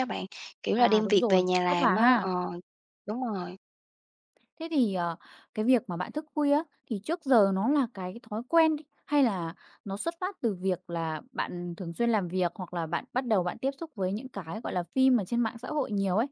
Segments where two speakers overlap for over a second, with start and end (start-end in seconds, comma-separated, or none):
0.8-2.3